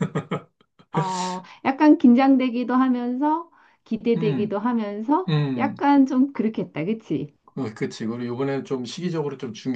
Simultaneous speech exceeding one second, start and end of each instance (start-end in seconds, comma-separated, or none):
none